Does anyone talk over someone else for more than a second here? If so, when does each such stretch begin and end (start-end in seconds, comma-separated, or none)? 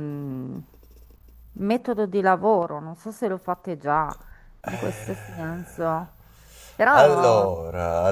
4.7-6.0